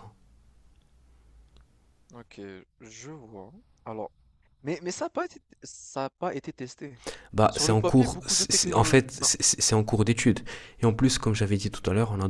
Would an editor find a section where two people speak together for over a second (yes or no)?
yes